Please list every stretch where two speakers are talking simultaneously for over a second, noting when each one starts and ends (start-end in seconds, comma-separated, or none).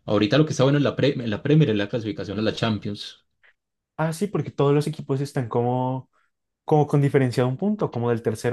none